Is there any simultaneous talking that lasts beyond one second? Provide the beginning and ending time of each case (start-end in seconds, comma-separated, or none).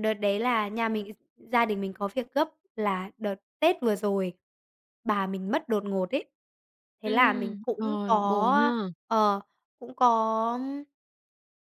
7.0-8.9